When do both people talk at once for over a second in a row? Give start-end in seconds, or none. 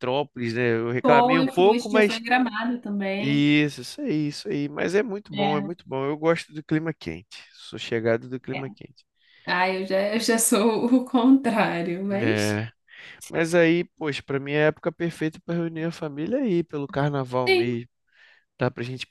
1.0-2.2